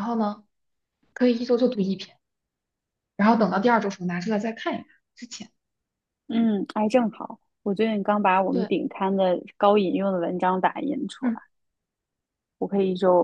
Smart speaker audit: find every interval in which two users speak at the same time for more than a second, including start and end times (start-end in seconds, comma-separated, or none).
none